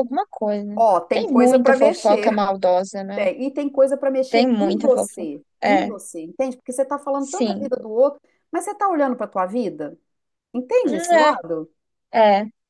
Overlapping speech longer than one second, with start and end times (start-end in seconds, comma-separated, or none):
0.8-2.4, 4.3-5.9